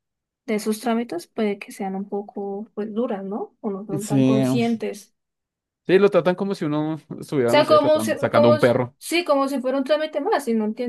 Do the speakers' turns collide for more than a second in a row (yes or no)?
yes